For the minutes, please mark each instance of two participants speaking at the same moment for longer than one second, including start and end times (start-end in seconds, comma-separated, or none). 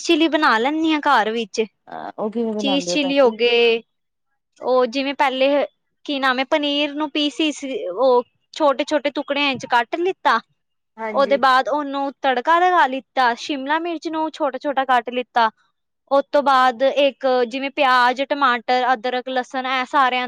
none